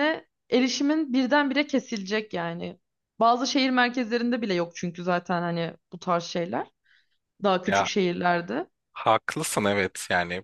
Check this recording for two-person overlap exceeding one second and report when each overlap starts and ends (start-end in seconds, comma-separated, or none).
none